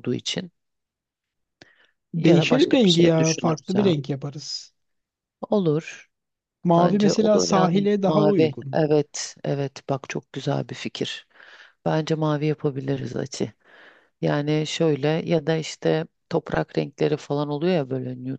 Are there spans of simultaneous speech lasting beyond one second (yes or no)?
yes